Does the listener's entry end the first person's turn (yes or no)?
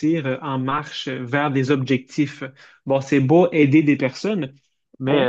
no